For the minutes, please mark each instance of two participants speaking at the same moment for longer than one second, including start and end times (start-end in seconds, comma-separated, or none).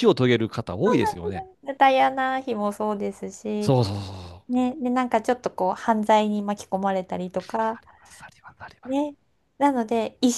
none